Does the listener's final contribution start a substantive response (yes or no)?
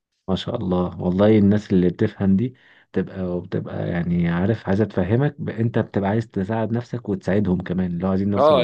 yes